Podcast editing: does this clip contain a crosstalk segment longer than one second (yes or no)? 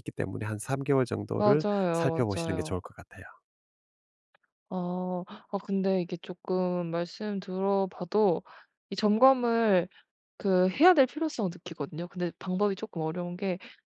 yes